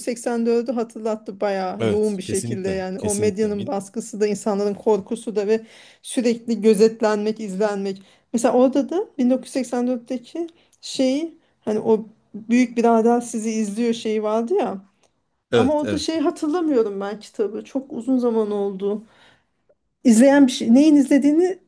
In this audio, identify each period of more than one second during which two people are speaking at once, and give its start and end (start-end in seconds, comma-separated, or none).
1.8-3.7